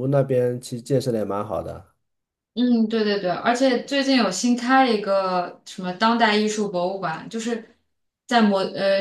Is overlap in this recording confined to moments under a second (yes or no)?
yes